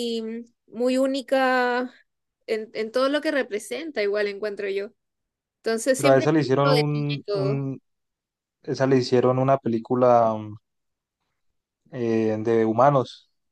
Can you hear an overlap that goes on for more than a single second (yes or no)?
yes